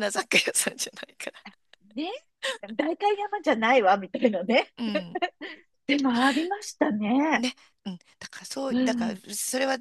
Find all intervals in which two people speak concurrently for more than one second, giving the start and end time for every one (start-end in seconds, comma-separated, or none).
none